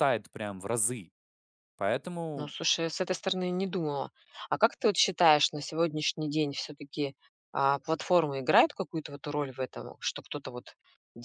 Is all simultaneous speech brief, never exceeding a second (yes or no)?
yes